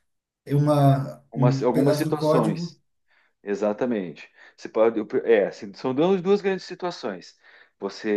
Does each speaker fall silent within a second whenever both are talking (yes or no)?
no